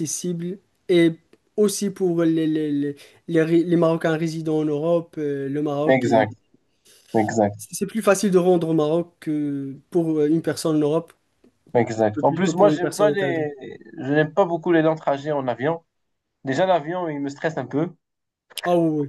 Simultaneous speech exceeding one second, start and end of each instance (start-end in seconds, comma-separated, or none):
12.2-13.4